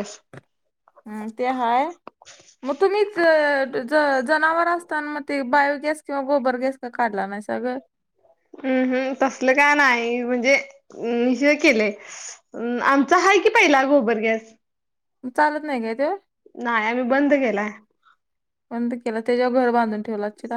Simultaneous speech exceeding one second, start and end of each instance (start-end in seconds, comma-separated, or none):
none